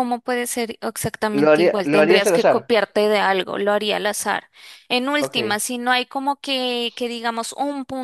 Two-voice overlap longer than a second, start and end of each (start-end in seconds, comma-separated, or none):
1.3-2.7